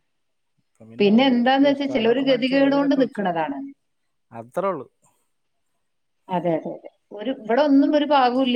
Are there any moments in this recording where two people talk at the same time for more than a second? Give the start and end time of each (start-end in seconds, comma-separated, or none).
1.3-3.2